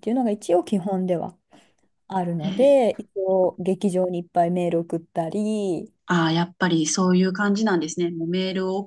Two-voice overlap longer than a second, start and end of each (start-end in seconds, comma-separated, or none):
none